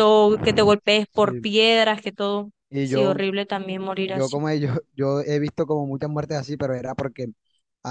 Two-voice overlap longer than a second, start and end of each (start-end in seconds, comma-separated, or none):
none